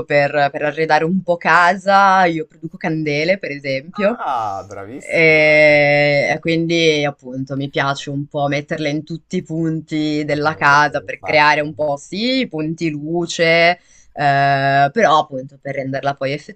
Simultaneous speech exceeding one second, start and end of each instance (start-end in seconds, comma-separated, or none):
10.3-11.7